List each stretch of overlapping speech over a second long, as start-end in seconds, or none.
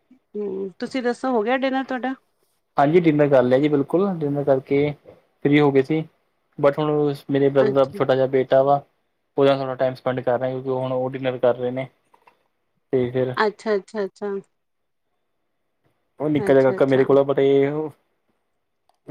none